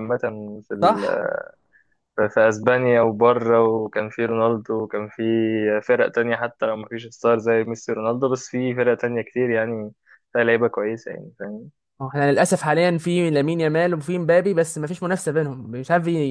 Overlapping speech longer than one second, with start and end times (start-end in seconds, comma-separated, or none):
none